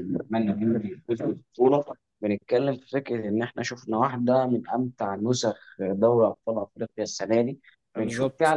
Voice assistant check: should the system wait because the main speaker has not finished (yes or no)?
yes